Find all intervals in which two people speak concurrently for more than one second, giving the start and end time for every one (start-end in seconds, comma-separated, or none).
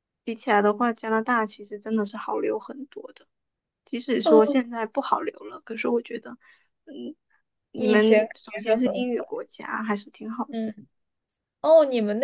7.7-9.2